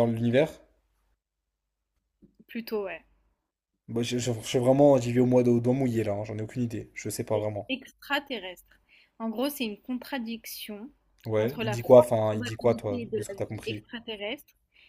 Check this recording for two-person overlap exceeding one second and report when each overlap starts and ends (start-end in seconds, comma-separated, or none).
11.4-13.8